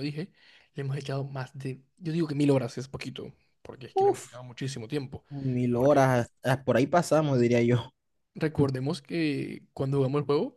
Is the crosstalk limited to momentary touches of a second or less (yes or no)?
yes